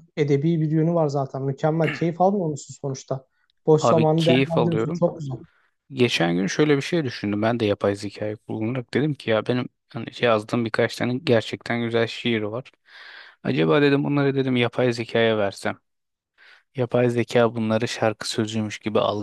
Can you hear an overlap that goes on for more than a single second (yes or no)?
yes